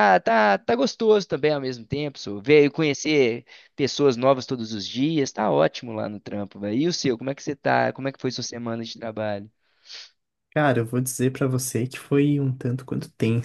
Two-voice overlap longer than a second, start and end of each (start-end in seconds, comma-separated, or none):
none